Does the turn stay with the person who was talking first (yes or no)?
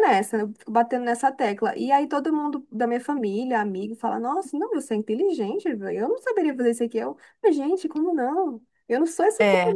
yes